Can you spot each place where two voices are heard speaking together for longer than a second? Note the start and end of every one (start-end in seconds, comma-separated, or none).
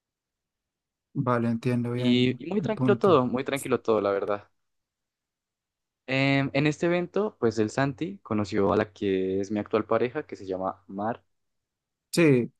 1.9-3.2